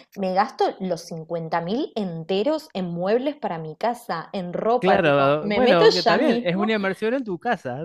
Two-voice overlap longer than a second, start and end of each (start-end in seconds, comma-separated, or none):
4.8-6.7